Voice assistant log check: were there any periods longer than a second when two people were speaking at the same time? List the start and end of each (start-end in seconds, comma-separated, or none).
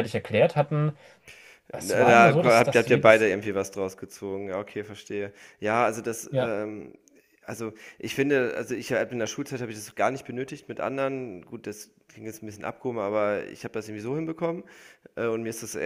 1.8-3.3